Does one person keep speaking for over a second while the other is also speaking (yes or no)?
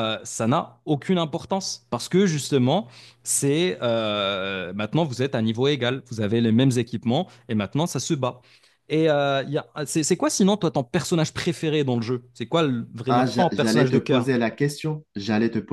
yes